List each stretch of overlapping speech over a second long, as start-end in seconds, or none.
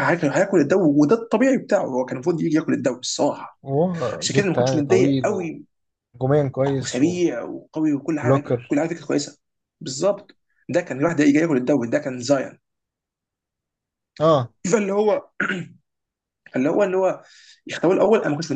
4.2-5.5